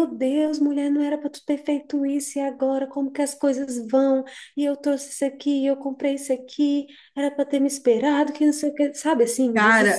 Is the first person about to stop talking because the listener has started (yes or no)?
yes